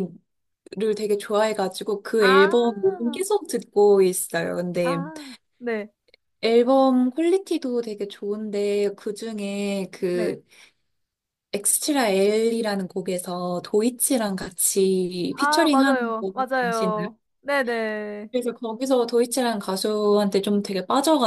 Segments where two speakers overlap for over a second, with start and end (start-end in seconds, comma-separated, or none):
15.4-17.1